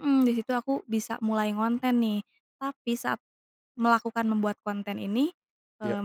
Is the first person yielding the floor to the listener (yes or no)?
no